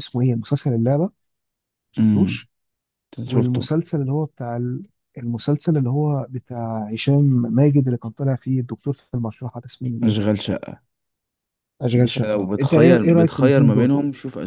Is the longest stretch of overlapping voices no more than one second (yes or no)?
no